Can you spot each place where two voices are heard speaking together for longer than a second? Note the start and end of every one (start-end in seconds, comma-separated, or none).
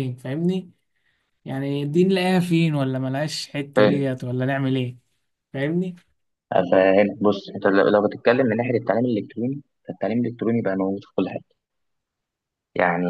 none